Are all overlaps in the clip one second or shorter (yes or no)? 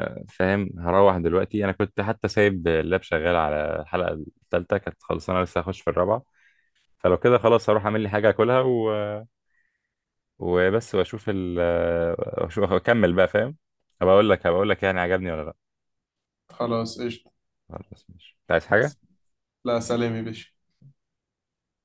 yes